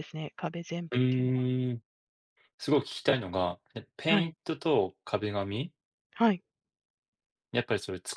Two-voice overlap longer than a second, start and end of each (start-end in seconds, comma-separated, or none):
none